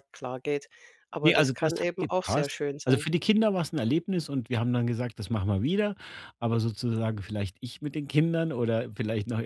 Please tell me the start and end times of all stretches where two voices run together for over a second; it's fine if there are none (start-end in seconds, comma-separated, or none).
1.2-3.1